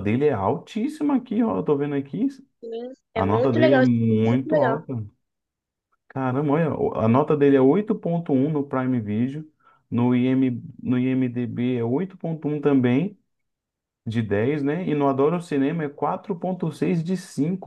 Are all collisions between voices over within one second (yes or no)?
no